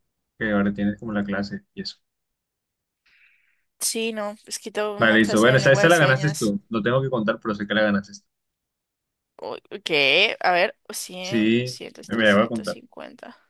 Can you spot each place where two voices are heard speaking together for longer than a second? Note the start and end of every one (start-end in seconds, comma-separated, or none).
5.0-6.5, 11.2-12.8